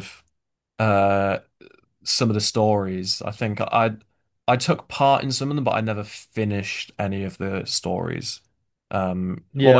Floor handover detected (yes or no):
yes